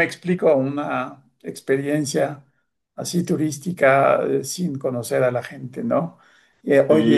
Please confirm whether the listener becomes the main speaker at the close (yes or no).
no